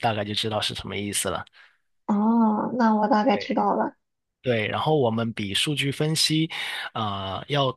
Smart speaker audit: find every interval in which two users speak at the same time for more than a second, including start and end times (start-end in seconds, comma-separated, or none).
none